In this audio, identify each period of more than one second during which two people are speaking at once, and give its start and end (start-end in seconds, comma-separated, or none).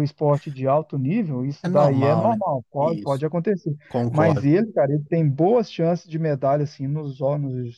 1.6-3.2